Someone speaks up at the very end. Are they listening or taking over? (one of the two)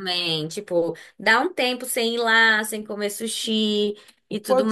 taking over